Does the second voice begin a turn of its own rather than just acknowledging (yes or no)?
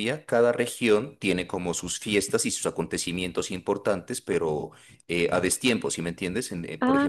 yes